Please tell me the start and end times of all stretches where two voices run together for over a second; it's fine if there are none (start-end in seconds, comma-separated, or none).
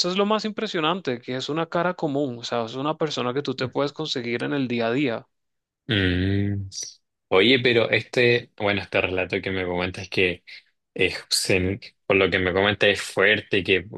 none